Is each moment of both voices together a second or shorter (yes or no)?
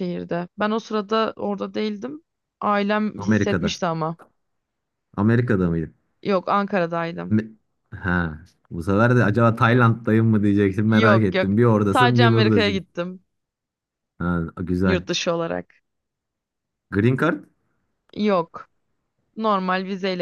no